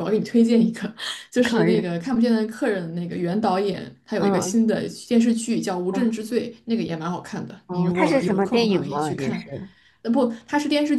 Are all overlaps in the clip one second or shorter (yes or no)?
no